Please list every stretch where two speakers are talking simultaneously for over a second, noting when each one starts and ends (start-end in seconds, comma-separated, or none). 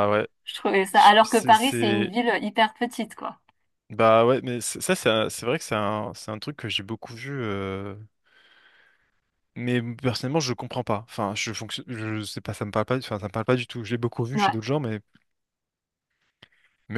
0.9-2.1